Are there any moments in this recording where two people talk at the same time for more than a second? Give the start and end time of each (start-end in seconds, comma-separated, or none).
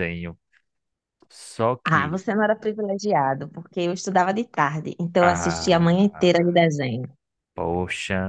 5.2-6.6